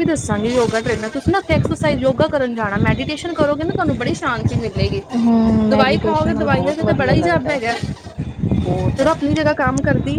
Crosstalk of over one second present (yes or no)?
yes